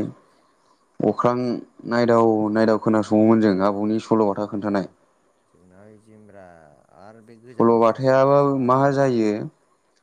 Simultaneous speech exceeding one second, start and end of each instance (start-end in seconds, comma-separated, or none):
7.5-9.3